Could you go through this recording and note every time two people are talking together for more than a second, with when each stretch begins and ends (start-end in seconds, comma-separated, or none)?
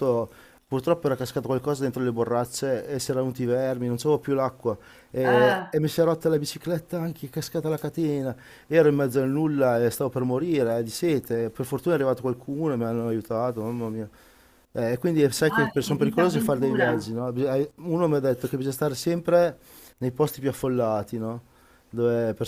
15.4-16.9